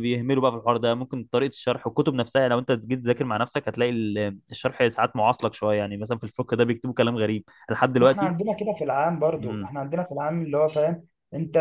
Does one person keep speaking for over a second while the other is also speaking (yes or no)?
no